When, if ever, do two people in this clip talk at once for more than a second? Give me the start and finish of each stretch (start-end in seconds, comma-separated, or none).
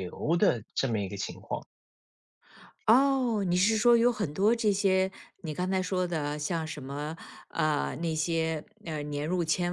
none